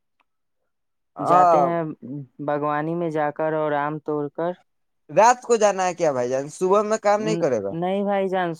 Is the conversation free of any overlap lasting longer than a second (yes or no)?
yes